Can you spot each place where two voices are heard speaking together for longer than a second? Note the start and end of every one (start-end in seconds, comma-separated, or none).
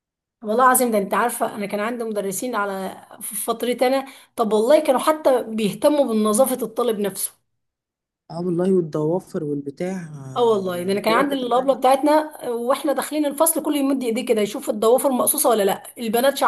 10.4-11.7